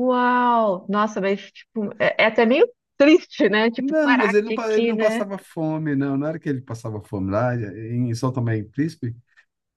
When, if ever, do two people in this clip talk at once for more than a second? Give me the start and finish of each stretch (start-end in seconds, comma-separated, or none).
3.8-5.2